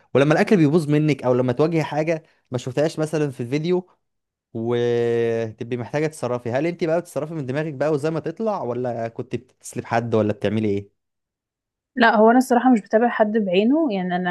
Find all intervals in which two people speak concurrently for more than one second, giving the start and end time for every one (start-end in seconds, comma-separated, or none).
none